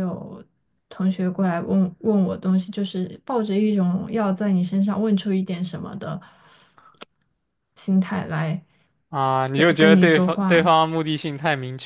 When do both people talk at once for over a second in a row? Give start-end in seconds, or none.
9.5-10.8